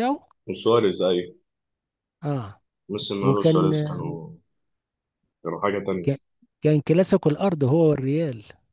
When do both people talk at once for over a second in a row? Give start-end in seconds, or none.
none